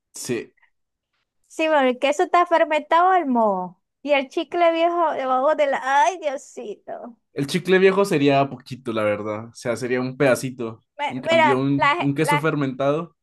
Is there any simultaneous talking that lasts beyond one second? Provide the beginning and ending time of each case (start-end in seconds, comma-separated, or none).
11.0-12.5